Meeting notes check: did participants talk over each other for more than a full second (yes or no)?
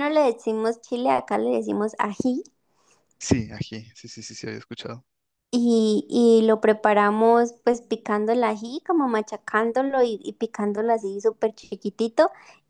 no